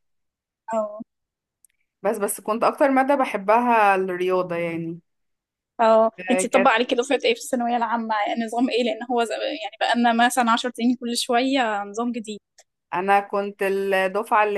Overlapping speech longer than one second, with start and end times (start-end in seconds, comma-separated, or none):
none